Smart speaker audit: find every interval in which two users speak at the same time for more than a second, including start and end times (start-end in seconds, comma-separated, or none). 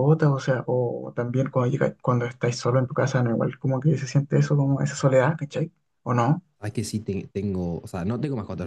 none